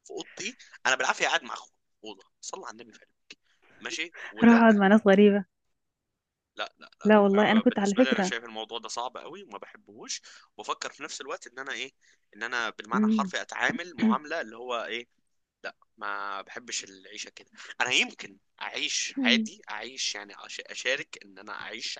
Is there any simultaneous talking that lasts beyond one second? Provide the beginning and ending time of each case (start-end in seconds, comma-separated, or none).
7.0-8.3